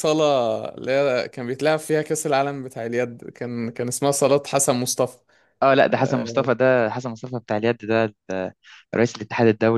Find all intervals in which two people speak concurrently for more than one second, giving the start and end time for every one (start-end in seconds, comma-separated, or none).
none